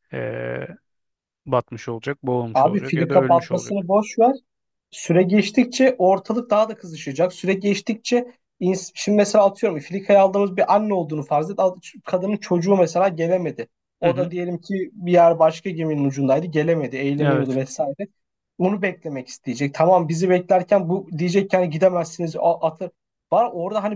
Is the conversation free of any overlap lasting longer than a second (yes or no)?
no